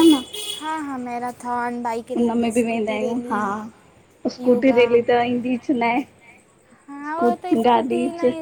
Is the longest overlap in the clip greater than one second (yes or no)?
yes